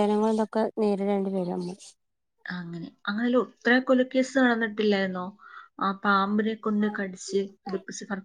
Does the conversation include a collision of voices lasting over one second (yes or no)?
no